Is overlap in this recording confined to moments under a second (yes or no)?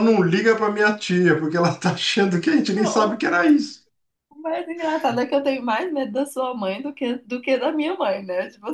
yes